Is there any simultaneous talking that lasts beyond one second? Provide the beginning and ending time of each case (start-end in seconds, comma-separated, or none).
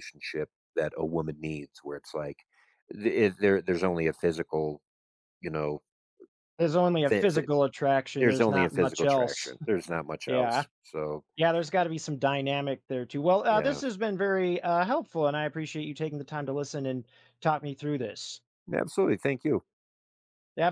8.2-9.6